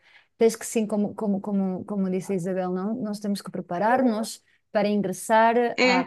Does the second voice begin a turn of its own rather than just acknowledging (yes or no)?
no